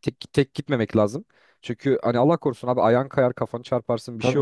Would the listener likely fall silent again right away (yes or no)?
yes